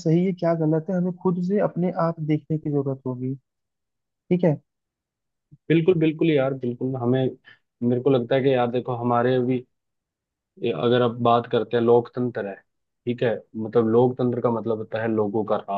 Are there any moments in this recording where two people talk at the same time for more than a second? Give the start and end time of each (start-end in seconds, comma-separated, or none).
none